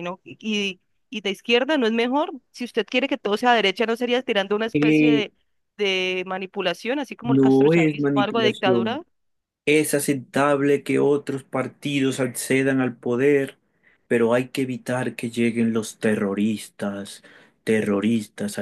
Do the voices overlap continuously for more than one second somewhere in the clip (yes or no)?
yes